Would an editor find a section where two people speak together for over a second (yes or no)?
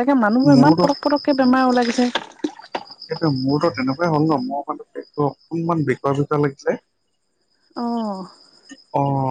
no